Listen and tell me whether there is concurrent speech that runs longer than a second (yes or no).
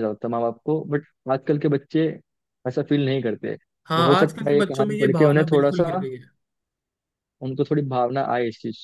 yes